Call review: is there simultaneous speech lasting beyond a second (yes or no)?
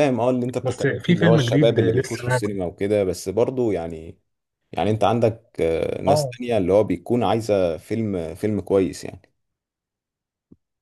yes